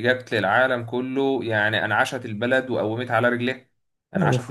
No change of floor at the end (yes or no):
yes